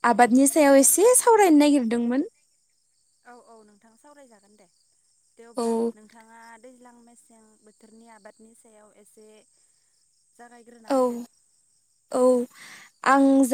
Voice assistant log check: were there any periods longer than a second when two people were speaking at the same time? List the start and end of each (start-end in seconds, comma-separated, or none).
none